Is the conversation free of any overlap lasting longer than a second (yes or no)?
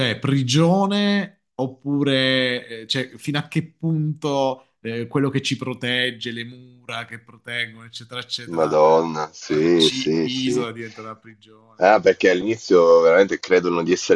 no